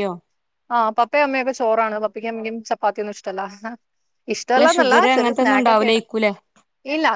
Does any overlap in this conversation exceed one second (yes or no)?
yes